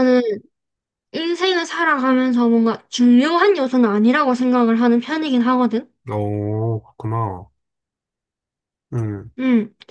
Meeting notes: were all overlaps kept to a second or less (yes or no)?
yes